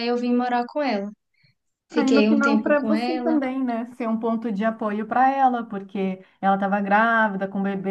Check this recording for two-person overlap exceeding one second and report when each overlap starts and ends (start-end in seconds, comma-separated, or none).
1.9-3.4